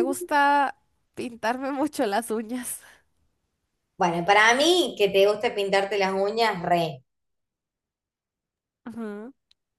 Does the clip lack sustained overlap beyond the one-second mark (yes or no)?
yes